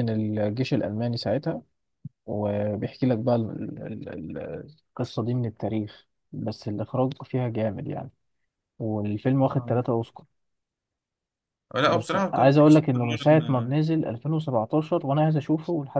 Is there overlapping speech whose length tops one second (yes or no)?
yes